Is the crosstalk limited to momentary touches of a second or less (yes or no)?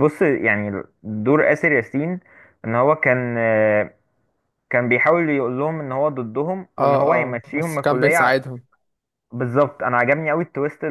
no